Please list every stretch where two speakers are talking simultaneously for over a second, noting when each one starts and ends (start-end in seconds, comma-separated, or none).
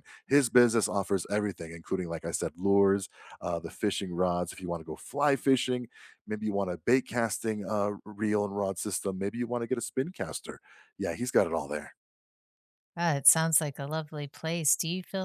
none